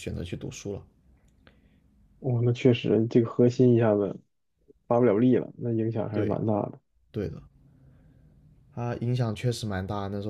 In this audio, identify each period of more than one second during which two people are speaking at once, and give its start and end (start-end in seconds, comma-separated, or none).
none